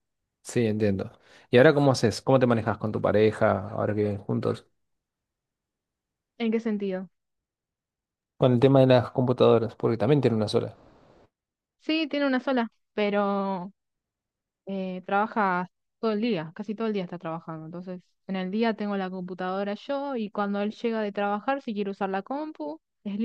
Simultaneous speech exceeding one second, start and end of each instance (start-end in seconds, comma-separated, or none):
none